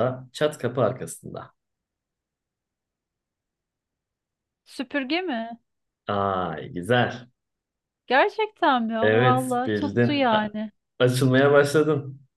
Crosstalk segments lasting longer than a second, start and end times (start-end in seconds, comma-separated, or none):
9.0-10.5